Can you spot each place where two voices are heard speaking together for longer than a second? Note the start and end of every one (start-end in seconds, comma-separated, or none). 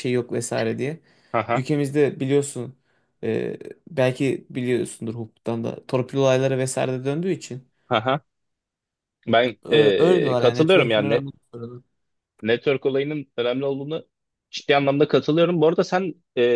9.6-11.3